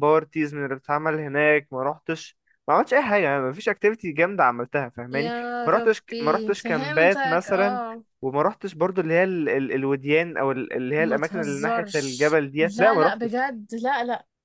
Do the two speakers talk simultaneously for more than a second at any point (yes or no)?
yes